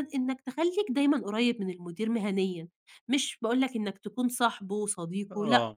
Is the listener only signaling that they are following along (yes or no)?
yes